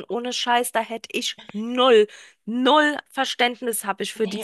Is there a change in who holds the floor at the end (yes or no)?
yes